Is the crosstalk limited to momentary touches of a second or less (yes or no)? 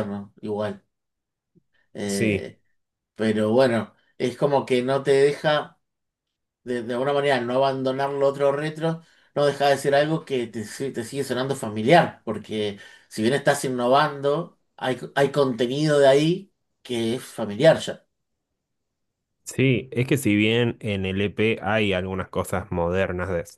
yes